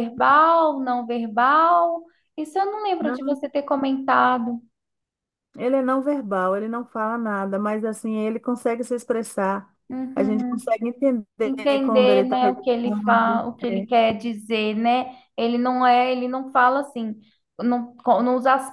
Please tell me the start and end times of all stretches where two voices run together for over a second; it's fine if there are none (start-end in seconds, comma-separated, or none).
11.4-13.9